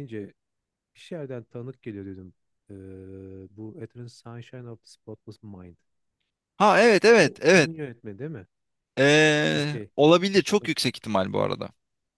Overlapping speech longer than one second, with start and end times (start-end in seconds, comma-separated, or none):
none